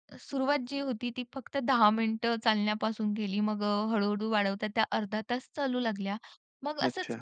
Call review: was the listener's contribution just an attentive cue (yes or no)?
yes